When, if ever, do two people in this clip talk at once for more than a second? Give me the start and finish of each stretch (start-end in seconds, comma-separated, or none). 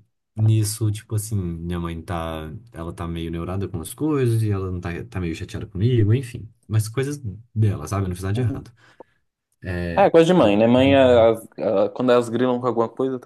none